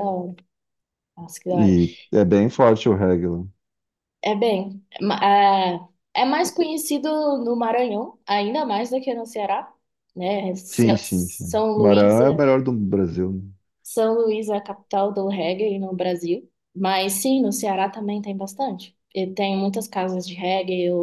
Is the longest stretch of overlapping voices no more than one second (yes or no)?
no